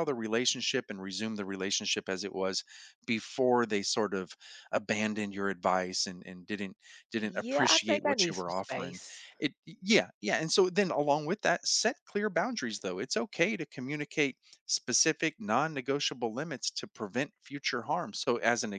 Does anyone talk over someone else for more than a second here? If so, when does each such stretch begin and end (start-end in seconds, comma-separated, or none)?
7.2-9.0